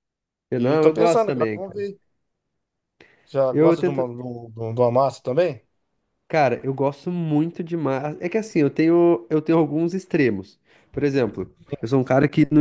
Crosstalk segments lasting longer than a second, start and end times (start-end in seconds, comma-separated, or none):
0.6-1.8